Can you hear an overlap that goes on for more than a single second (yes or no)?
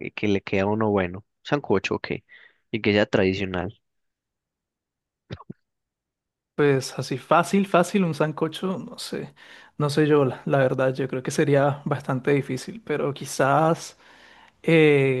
no